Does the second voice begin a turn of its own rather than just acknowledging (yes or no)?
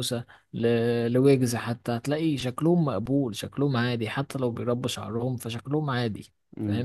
yes